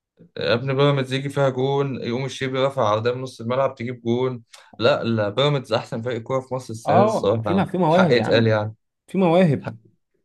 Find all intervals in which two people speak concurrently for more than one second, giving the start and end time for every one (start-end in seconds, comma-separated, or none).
6.8-8.5